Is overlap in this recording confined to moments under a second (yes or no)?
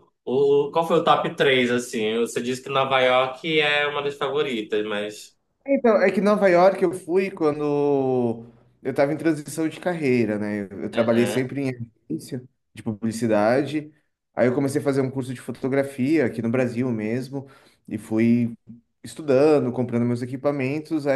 yes